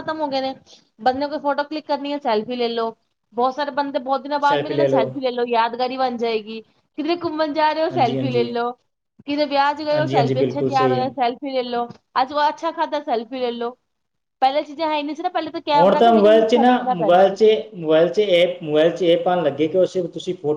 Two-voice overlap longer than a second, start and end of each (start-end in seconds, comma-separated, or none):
9.9-11.1, 15.8-17.6